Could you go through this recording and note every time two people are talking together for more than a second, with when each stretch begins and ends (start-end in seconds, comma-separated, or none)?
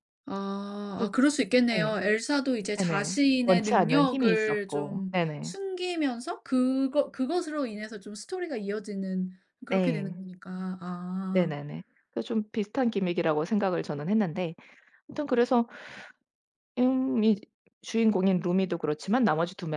2.8-5.5